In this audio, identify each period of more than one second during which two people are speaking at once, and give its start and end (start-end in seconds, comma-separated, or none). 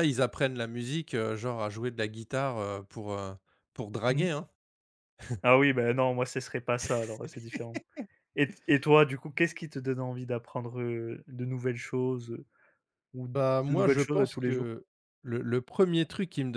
13.3-14.7